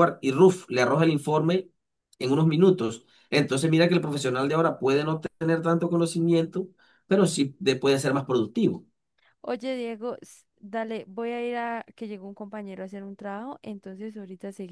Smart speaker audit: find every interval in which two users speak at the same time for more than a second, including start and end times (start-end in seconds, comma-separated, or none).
none